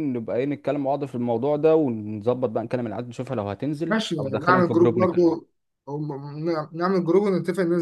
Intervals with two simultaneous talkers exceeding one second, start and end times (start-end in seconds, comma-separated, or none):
3.9-5.4